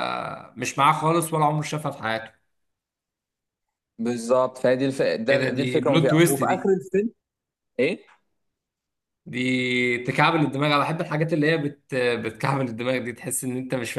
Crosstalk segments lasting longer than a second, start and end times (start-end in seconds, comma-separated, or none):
5.3-6.7